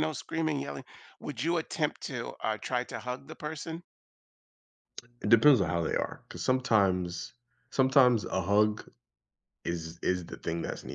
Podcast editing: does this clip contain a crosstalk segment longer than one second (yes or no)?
no